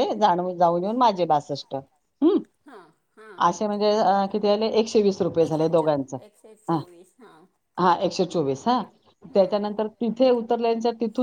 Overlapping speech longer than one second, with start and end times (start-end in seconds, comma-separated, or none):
none